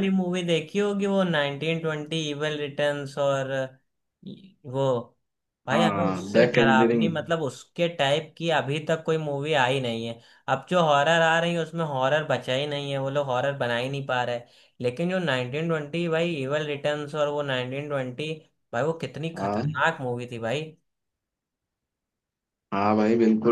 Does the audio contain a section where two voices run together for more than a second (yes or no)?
yes